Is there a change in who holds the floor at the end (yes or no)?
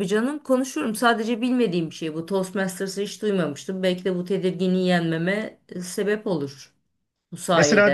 yes